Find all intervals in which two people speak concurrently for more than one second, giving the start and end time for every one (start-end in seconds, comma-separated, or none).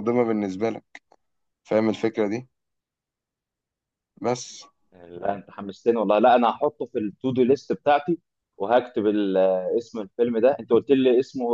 none